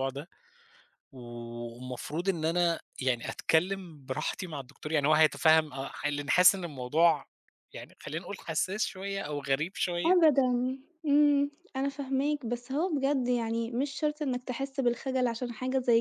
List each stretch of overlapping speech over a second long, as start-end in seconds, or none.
none